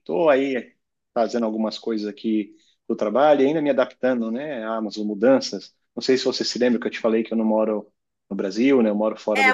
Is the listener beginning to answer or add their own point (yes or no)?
yes